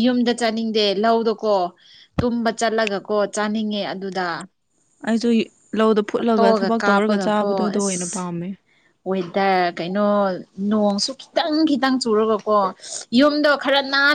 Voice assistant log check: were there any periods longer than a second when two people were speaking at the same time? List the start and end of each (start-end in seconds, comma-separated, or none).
6.2-8.0